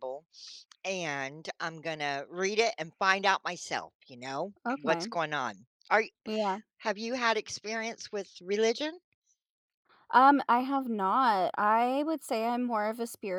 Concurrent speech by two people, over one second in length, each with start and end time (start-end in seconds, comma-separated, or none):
none